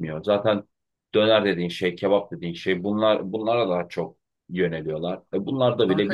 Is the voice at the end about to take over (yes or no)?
yes